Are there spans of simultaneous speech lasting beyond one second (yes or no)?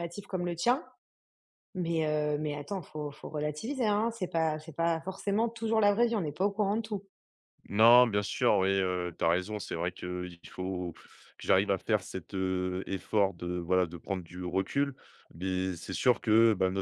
no